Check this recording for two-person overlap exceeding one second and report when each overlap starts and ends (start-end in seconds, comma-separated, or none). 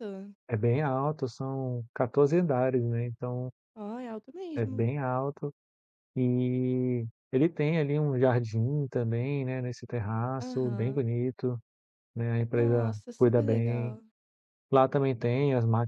12.5-13.9